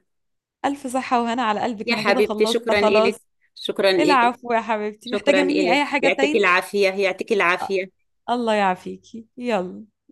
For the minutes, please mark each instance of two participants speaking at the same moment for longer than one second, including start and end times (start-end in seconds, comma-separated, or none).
1.9-3.1, 5.0-6.4